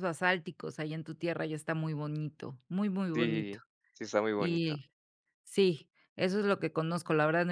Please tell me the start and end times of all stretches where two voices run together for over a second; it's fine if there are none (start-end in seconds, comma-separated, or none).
none